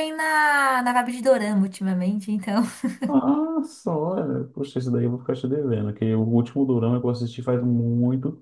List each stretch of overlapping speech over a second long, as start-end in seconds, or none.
none